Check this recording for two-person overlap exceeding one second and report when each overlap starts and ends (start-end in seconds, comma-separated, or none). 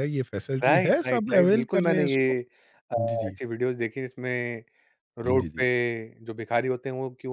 0.6-2.4